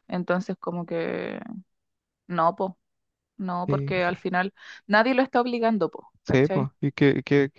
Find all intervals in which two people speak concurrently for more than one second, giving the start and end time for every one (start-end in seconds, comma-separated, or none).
none